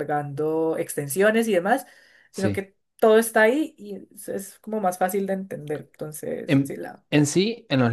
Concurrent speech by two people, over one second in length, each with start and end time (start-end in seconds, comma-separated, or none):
none